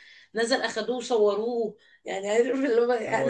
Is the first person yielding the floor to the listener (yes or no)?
yes